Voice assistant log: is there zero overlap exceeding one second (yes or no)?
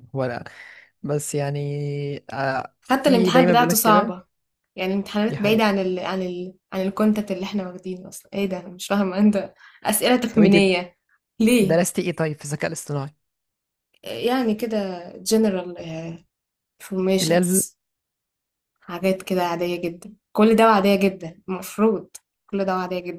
no